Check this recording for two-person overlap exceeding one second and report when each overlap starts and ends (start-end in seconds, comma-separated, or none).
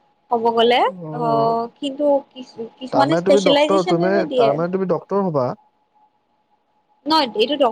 2.9-4.7